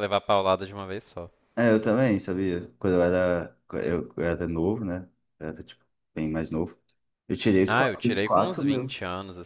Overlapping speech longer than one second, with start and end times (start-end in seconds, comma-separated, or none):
7.7-9.0